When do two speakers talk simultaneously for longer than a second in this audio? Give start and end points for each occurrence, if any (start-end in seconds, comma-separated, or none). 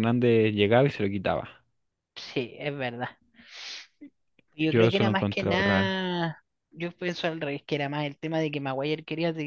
4.7-6.1